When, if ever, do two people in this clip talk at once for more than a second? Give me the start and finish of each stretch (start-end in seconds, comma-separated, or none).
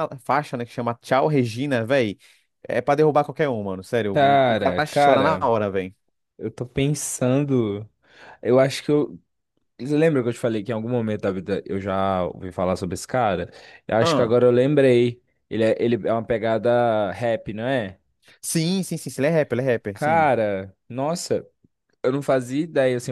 4.1-5.5